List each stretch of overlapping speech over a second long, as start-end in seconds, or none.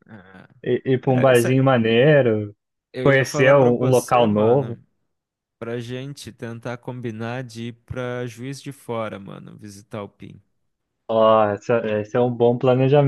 3.0-4.8